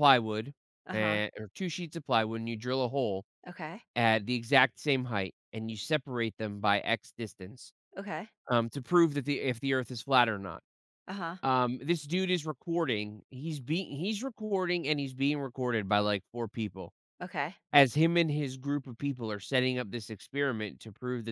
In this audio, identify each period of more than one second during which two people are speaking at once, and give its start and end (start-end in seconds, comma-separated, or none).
none